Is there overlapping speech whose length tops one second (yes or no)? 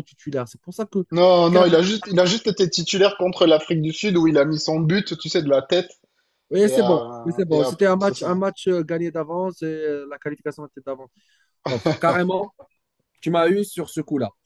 yes